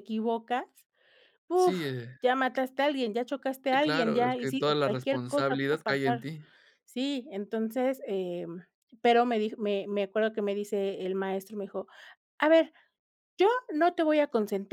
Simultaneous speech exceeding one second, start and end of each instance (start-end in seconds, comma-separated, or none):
3.7-6.3